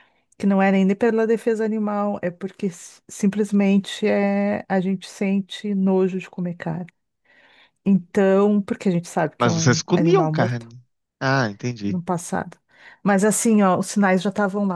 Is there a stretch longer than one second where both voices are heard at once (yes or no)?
yes